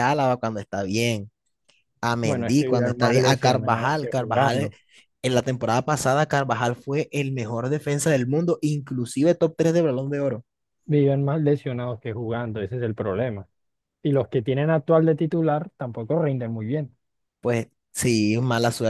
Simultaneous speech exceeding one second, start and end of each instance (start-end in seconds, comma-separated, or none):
2.2-4.7